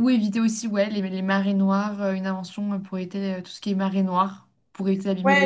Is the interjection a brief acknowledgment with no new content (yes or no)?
no